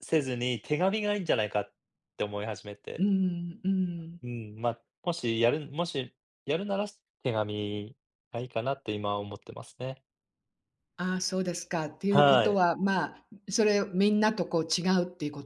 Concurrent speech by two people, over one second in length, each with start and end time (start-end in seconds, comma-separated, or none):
none